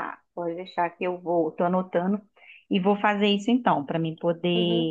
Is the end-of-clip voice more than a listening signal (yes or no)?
yes